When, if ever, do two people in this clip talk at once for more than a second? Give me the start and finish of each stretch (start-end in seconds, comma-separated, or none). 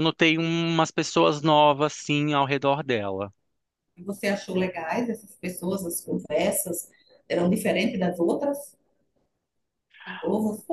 none